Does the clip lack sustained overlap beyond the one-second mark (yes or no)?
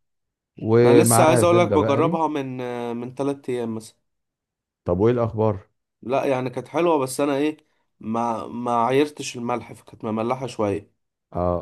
no